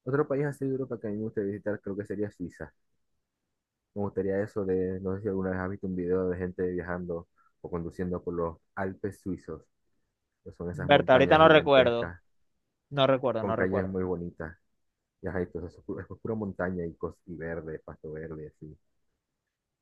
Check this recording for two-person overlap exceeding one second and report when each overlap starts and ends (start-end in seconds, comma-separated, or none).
10.9-12.1